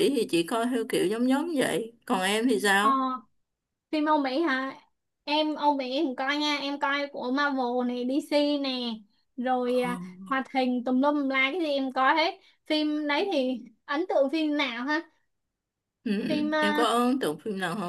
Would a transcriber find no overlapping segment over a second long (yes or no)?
yes